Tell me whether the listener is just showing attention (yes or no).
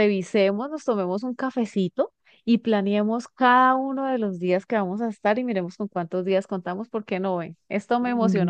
no